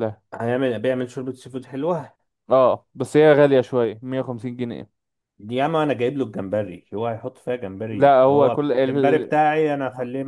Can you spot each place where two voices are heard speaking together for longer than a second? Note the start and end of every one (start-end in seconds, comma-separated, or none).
7.9-9.3